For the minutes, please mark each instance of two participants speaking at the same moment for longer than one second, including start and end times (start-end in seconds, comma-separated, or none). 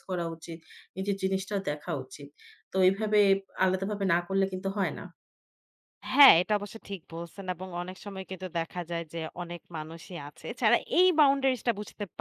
none